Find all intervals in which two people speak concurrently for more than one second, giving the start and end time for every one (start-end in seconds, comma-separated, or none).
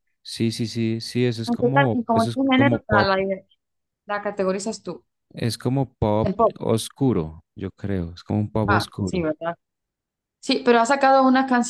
1.5-3.1